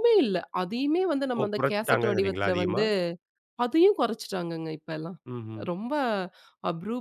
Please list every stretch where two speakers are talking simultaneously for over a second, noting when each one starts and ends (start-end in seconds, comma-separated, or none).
1.4-2.8